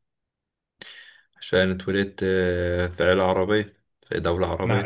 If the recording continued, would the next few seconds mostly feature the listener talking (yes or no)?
yes